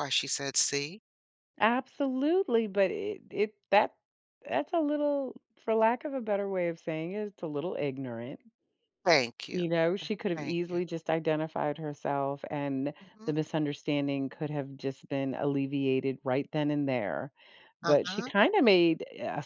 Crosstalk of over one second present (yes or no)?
no